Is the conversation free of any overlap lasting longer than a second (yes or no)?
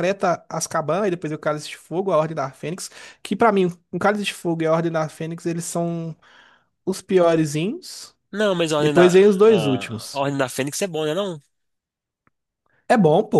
no